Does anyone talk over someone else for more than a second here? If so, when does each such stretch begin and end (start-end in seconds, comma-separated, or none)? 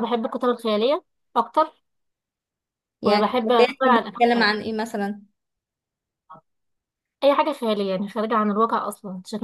3.0-4.5